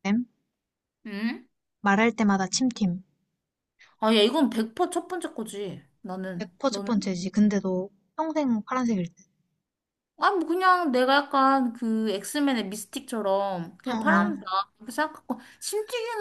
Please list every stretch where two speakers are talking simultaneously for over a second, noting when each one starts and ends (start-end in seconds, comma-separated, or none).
none